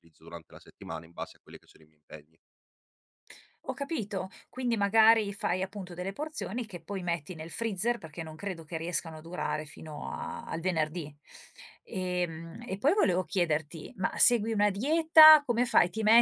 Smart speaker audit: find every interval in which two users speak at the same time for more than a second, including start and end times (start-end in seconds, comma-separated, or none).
none